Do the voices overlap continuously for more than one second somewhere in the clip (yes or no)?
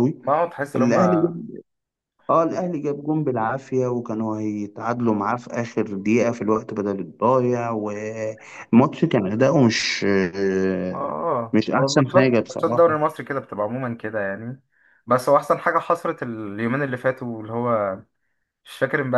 yes